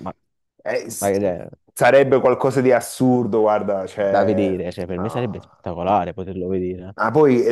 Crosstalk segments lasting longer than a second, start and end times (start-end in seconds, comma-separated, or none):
4.0-6.2